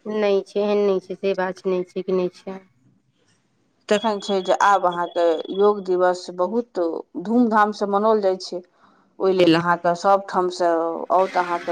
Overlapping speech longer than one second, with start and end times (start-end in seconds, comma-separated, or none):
none